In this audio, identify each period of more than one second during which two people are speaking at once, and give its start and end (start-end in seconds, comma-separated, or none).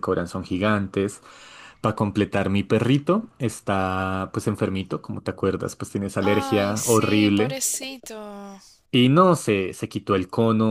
6.2-7.5